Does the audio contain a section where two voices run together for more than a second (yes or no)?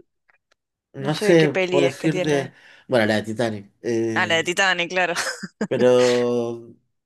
yes